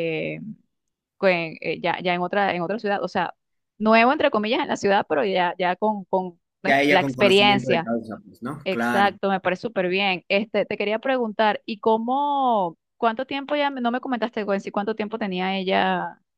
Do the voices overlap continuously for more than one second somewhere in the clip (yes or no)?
yes